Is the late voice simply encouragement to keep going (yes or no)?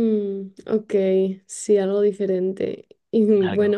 yes